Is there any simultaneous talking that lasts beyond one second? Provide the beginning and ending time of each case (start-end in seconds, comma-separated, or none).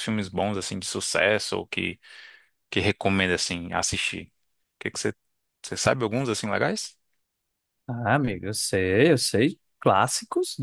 none